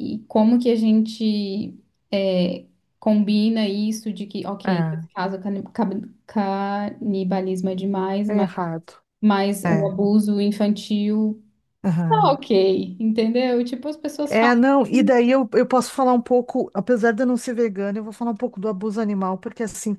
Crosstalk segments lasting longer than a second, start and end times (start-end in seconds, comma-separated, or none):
none